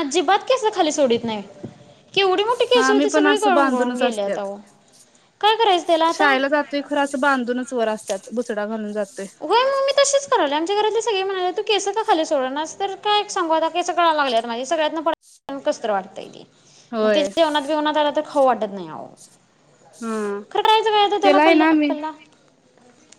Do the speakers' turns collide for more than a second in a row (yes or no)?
yes